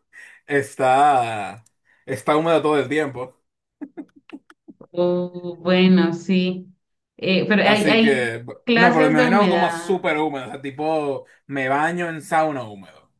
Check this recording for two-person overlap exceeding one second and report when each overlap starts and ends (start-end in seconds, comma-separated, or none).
7.6-10.0